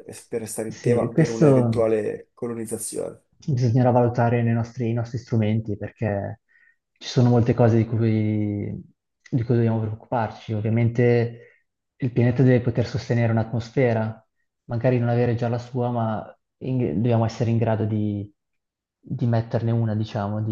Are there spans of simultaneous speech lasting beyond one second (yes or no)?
yes